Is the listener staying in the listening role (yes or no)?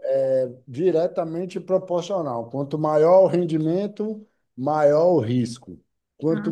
yes